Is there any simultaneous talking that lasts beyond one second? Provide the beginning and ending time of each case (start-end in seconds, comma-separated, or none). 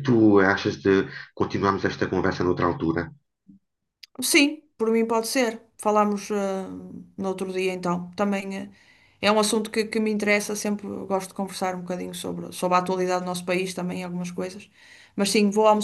none